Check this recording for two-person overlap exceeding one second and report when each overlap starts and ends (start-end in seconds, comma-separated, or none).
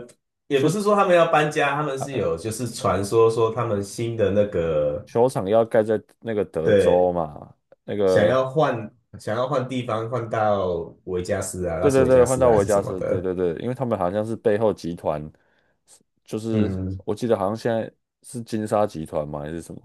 11.8-13.3